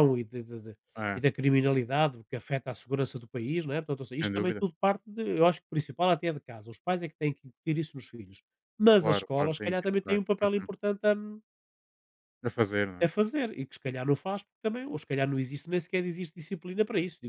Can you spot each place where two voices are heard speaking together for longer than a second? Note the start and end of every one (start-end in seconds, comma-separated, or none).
9.0-10.7